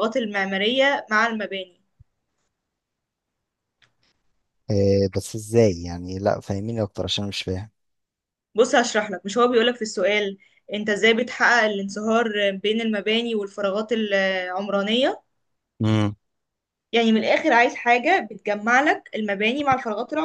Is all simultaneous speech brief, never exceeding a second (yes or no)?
yes